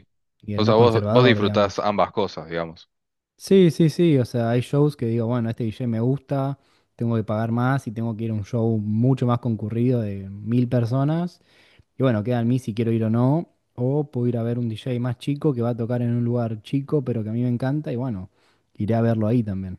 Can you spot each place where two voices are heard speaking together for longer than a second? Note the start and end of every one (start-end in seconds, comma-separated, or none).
0.6-1.9